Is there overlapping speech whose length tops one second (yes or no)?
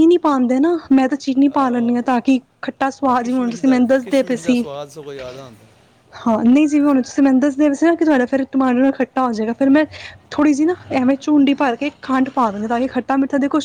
yes